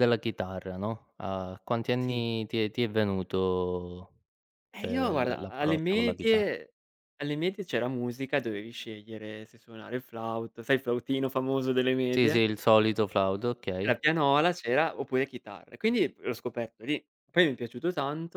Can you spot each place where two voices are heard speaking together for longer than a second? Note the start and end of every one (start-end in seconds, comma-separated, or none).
4.8-6.5